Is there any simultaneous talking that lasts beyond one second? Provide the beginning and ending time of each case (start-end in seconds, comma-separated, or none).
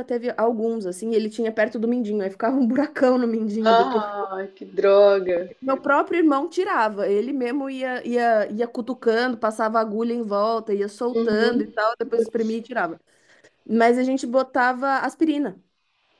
11.1-12.6